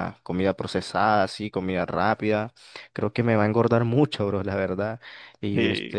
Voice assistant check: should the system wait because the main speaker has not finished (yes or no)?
yes